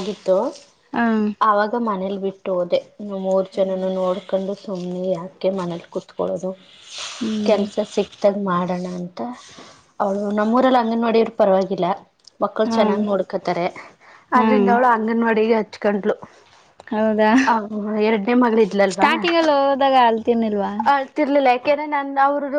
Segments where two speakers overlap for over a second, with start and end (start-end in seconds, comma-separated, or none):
none